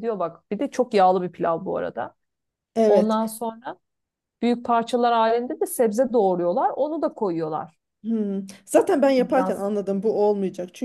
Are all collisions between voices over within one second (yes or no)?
yes